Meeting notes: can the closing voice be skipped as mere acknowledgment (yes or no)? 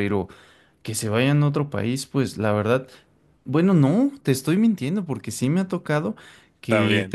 yes